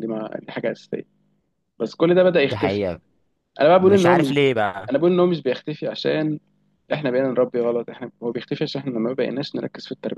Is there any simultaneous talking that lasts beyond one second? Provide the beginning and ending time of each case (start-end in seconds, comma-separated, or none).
none